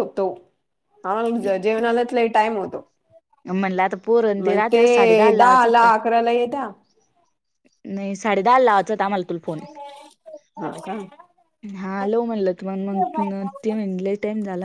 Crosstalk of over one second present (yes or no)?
yes